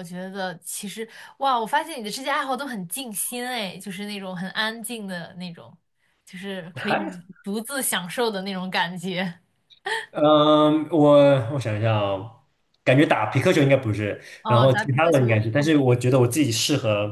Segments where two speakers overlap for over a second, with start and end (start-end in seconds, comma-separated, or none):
14.4-15.8